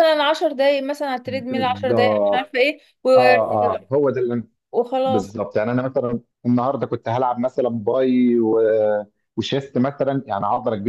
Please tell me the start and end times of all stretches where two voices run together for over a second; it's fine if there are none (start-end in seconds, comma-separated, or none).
1.2-2.6